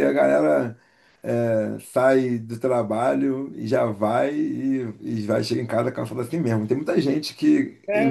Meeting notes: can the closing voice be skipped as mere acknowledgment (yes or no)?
yes